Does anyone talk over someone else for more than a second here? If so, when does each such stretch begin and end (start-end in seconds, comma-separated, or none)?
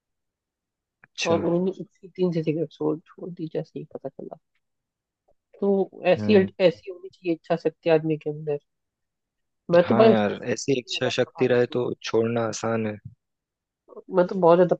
9.8-11.9